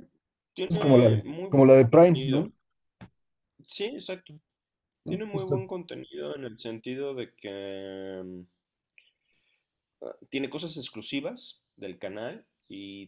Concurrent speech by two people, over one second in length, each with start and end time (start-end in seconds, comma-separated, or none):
0.7-2.5